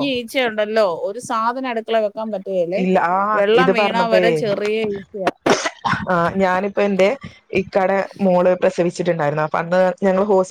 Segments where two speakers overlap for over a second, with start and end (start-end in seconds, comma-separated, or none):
none